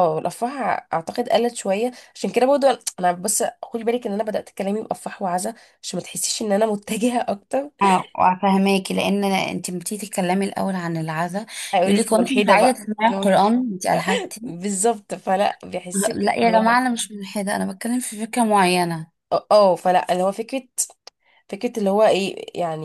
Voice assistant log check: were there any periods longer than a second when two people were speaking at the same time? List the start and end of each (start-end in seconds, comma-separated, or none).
11.8-13.4